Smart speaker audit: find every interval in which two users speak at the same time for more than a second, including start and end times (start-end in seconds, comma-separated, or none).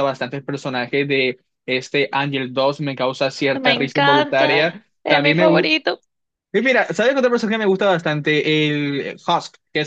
3.5-5.8